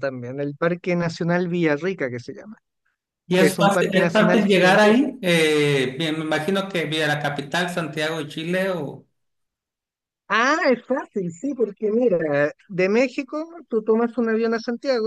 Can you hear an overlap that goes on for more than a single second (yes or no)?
yes